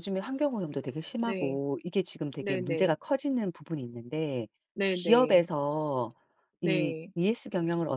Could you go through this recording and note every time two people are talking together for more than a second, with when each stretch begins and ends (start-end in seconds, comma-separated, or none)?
none